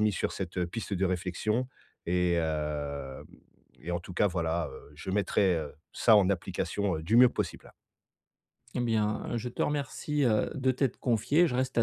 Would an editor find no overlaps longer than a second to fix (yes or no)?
yes